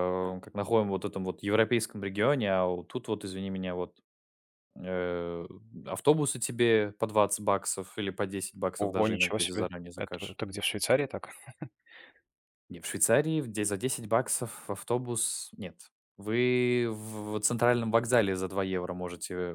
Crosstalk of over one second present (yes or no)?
yes